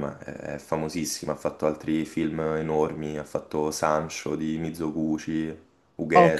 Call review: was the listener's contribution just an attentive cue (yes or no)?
no